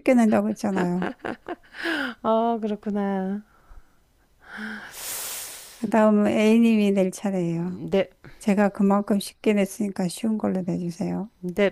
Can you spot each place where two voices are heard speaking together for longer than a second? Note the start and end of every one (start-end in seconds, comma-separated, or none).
none